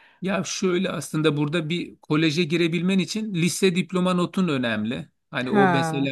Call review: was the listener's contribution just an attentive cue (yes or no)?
yes